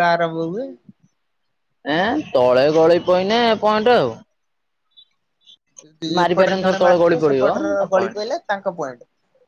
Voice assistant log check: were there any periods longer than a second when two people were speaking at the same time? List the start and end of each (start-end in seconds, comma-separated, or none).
6.2-8.2